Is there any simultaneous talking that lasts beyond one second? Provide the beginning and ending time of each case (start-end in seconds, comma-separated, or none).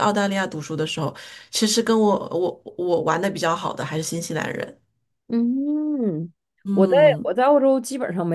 none